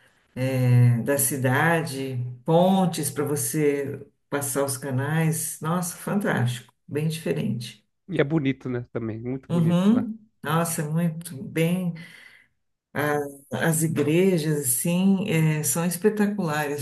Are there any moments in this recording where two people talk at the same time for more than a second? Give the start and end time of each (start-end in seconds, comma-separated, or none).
none